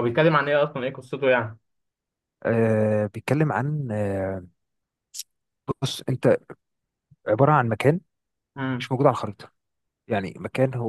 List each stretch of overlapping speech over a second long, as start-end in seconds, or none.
none